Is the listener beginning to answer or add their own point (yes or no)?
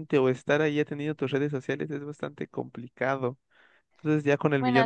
no